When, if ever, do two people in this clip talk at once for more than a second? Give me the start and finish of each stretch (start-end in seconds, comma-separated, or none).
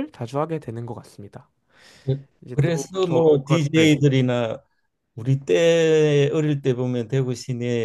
2.4-4.0